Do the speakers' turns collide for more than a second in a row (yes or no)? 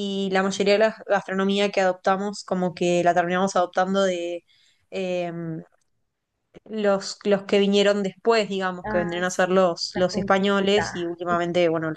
yes